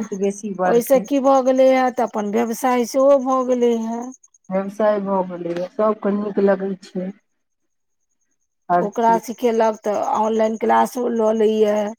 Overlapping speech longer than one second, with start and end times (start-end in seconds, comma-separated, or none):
none